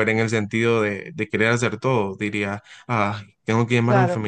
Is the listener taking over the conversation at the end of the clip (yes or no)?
no